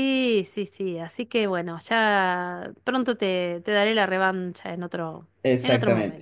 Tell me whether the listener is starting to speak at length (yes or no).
yes